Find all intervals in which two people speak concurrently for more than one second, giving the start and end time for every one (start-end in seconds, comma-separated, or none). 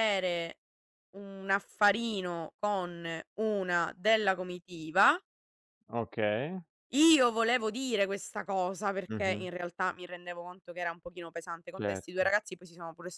none